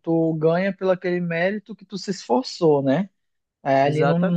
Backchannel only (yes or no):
yes